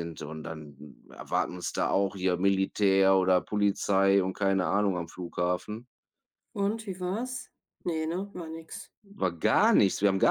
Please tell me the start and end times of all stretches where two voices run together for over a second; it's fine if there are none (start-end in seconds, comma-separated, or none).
none